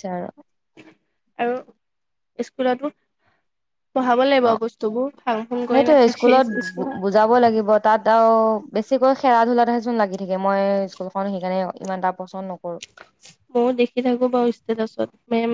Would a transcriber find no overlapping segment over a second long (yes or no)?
yes